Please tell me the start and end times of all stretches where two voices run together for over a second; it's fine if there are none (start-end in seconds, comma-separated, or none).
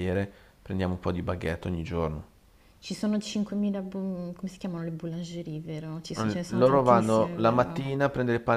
6.2-7.9